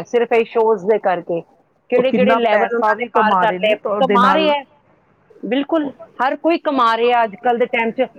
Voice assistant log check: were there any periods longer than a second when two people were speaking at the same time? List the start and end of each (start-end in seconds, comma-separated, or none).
2.0-4.5